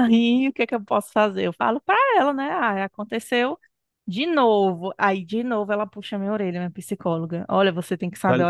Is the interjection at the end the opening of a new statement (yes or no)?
no